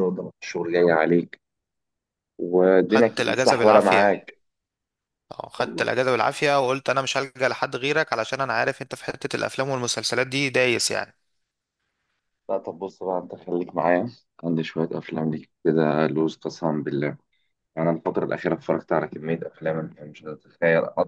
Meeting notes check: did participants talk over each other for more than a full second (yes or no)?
yes